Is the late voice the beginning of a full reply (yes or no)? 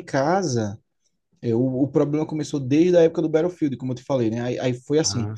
no